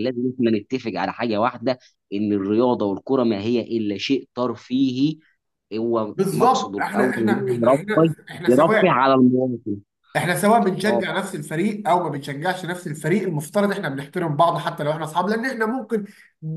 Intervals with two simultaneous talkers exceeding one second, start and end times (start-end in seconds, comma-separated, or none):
6.1-9.0